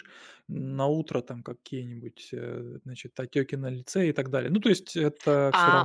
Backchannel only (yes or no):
no